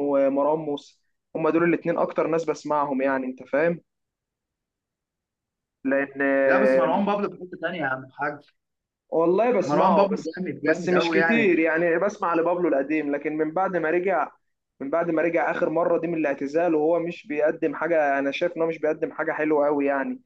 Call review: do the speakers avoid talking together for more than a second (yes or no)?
no